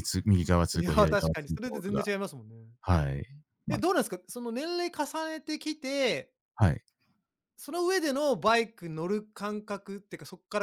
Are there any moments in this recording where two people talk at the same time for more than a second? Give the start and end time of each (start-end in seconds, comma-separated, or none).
0.7-2.0